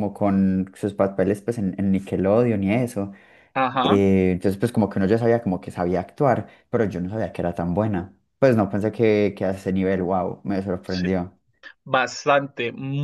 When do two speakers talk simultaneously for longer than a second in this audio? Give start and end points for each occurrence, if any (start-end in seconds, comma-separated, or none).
none